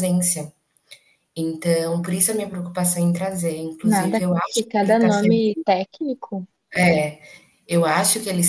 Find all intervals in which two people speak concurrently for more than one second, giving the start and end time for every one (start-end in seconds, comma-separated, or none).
3.8-5.7